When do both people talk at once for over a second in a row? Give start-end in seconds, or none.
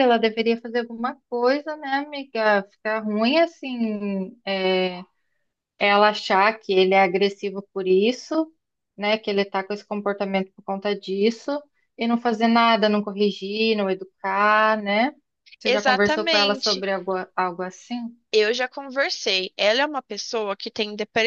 15.7-16.9